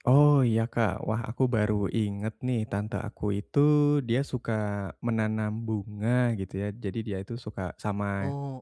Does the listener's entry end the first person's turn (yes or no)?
no